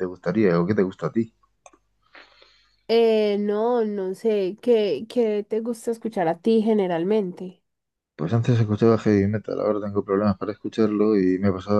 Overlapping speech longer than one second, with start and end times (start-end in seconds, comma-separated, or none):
none